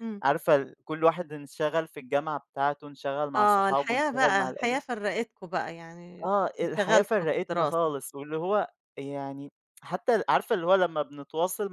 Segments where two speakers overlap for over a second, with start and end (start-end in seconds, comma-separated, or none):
3.4-4.8, 6.2-8.0